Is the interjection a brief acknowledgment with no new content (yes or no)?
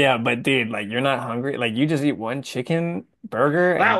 no